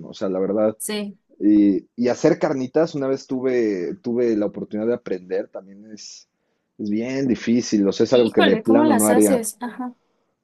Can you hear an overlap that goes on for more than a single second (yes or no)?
yes